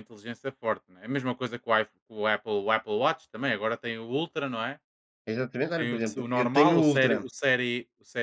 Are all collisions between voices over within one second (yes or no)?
no